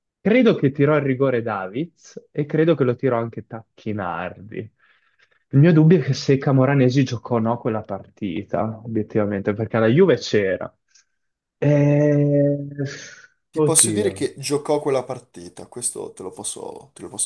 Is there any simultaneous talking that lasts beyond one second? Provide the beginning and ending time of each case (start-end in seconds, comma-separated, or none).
none